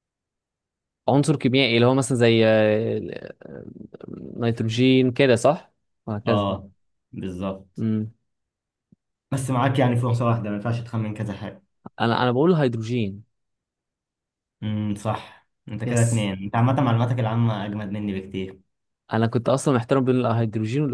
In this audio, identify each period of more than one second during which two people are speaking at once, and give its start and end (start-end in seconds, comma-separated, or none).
none